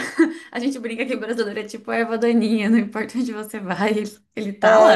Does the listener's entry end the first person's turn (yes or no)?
yes